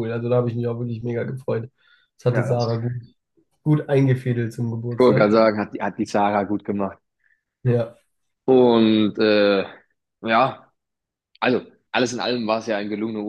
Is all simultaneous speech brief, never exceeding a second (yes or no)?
yes